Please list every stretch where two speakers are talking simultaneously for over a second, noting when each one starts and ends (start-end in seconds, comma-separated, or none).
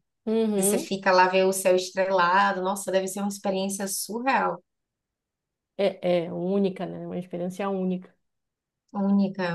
none